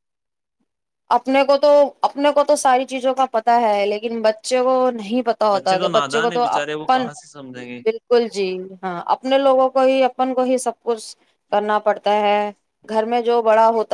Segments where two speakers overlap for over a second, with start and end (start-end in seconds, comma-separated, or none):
5.5-7.1